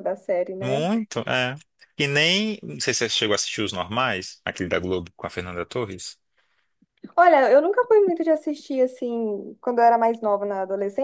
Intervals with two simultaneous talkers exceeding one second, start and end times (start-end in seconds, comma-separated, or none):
none